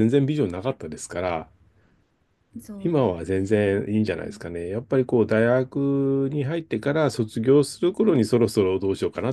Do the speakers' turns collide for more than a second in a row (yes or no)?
yes